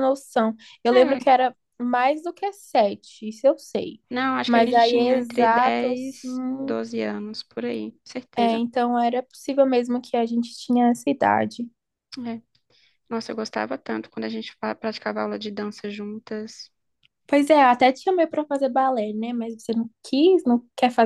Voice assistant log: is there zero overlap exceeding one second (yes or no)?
no